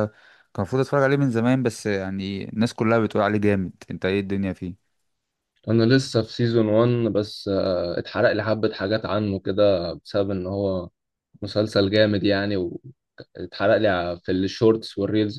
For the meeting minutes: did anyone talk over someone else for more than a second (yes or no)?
no